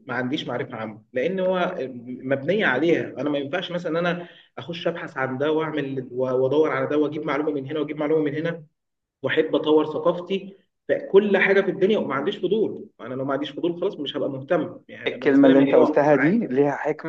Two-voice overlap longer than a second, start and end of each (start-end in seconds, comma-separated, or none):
15.1-16.4